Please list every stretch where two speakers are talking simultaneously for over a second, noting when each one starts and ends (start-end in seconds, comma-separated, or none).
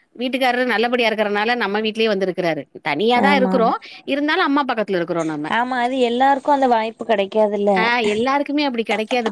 none